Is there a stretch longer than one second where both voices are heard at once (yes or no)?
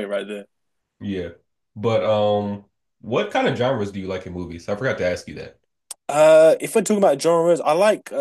no